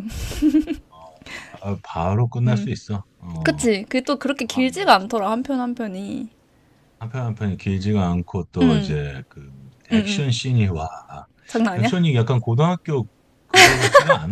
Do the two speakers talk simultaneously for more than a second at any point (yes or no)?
no